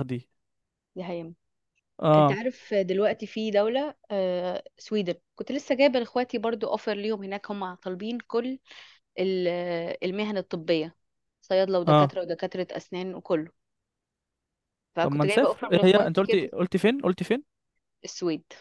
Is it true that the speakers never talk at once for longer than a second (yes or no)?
no